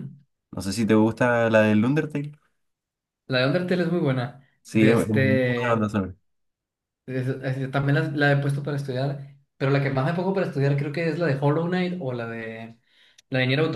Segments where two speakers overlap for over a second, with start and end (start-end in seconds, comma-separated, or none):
4.6-5.9